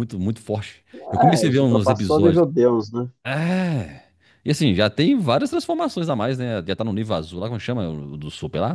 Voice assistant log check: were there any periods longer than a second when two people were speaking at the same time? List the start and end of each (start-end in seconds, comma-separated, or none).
1.2-2.4